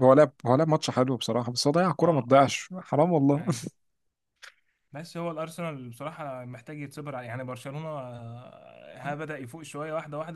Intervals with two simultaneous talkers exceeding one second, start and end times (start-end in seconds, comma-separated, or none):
none